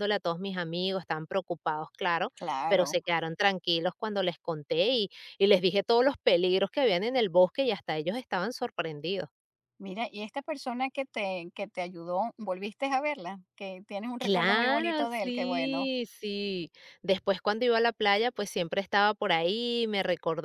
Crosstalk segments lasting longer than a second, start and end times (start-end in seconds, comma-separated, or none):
14.2-15.9